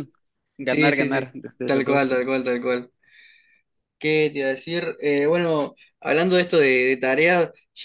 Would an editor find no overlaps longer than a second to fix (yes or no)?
no